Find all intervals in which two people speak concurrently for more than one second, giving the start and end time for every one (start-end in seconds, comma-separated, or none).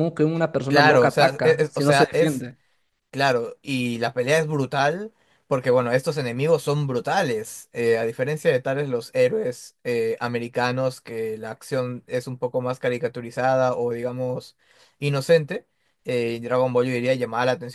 0.7-2.5